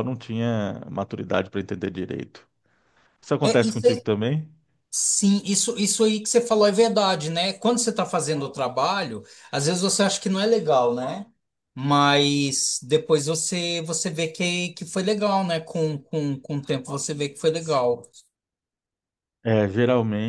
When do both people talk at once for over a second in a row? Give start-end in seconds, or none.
none